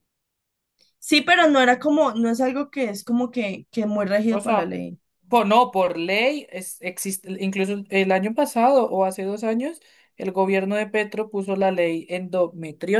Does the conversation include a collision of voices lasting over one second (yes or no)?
no